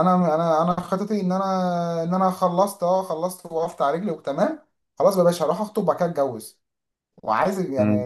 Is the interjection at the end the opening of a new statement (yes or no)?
yes